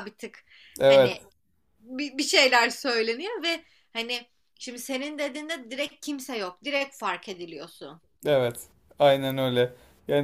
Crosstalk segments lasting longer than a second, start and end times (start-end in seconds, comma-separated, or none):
none